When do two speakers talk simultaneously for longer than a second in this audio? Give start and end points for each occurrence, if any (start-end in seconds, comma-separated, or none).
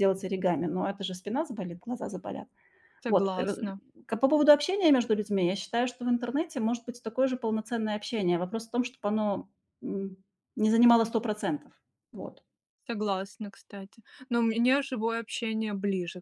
none